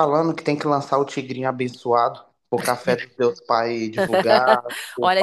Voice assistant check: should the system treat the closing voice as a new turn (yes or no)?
yes